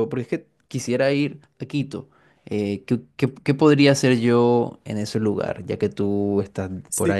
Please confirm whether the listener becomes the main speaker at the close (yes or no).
yes